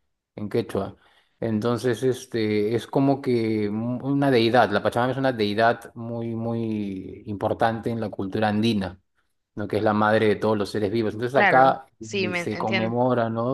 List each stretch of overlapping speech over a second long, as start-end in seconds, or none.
11.3-12.9